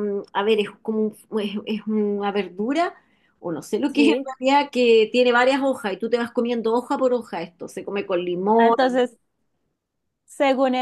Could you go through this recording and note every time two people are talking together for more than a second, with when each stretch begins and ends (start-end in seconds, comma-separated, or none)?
none